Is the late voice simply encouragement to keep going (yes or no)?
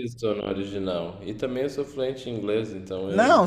no